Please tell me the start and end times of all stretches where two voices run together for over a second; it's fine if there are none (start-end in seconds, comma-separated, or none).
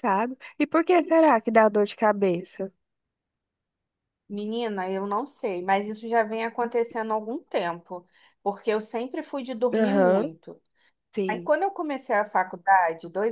none